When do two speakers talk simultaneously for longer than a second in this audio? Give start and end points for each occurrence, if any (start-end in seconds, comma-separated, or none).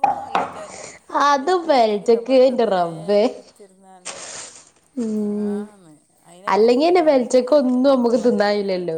6.6-8.4